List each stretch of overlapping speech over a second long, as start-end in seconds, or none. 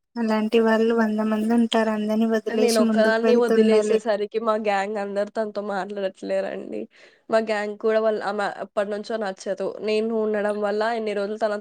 2.6-4.0